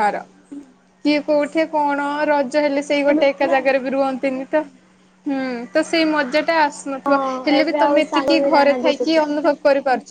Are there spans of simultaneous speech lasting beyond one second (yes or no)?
yes